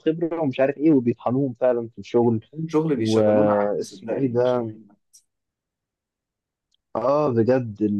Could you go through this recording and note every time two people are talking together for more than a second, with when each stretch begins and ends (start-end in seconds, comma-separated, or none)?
3.0-4.7